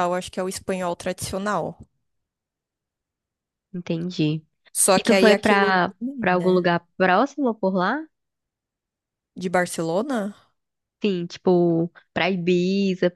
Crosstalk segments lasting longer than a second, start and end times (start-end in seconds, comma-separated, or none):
5.0-6.7